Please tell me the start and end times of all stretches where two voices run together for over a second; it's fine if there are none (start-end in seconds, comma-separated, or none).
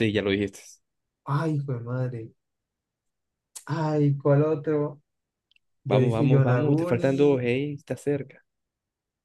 5.9-7.4